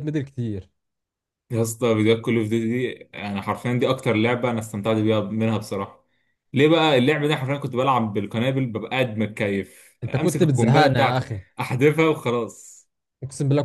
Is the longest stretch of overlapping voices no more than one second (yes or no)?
no